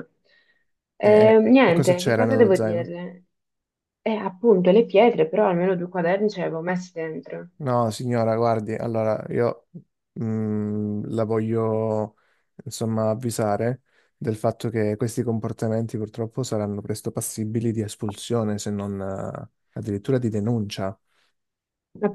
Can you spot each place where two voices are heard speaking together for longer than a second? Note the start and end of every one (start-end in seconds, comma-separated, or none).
1.0-2.9